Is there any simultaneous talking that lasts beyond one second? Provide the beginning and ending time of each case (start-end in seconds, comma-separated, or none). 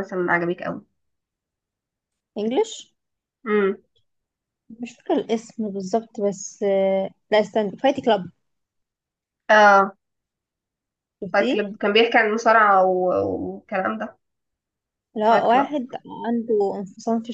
none